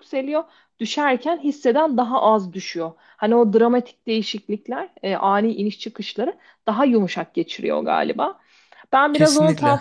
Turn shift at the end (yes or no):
no